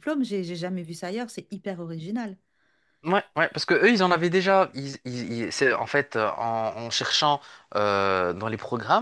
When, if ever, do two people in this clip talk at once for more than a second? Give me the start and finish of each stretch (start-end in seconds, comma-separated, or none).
none